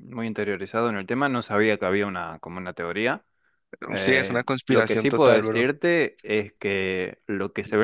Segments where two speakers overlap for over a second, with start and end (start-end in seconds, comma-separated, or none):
4.0-5.7